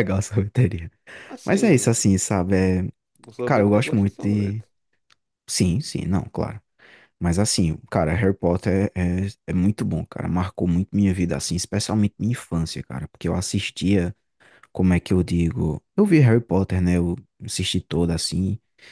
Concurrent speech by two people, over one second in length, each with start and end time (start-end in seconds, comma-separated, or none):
3.4-4.6